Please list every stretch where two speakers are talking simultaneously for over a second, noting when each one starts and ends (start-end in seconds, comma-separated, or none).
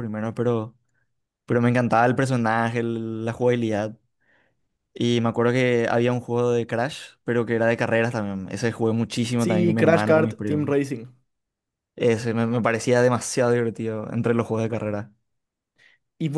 9.4-10.8